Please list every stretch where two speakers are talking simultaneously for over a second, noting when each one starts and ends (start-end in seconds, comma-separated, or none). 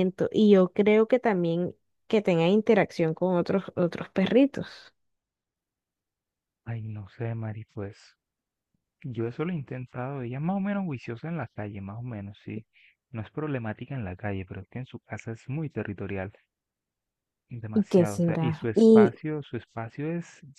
17.7-19.1